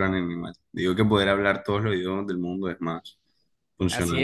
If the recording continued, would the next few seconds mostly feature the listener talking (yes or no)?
yes